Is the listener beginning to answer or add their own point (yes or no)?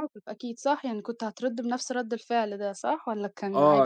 yes